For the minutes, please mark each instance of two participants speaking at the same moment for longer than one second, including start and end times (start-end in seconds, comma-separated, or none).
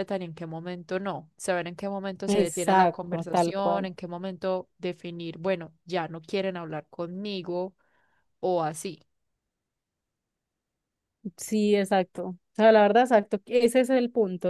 2.3-3.9